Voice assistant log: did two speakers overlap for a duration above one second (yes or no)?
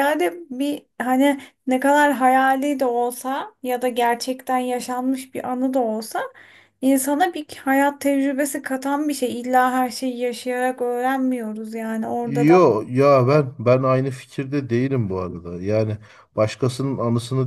no